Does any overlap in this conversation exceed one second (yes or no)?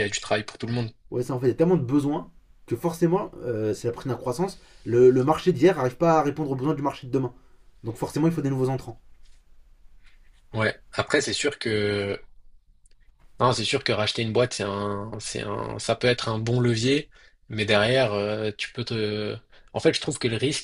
no